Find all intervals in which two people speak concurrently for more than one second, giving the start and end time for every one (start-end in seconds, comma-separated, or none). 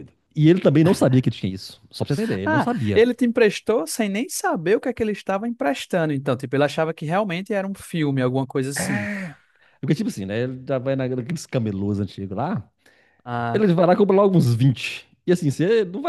none